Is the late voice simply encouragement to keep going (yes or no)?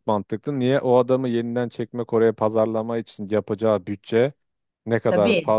yes